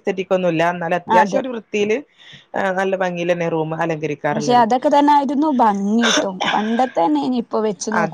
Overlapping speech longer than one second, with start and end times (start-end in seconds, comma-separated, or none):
none